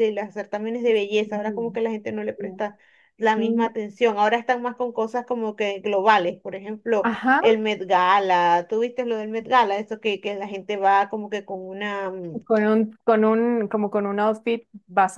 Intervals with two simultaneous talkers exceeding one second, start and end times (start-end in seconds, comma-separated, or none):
none